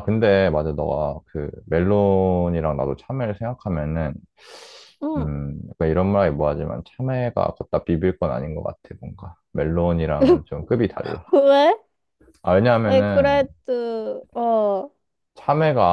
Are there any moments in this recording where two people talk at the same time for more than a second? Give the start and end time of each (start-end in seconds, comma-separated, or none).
none